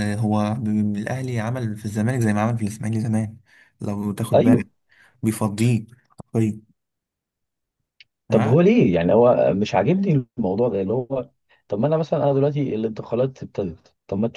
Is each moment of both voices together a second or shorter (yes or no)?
yes